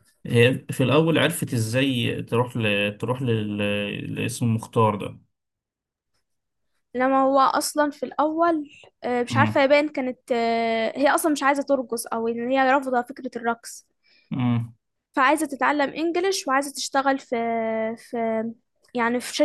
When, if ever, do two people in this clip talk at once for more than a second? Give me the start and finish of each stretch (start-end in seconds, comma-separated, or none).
none